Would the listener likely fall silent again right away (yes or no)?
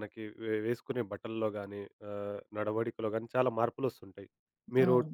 yes